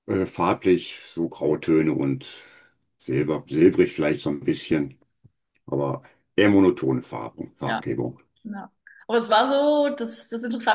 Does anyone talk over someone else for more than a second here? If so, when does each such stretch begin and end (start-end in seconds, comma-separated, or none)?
none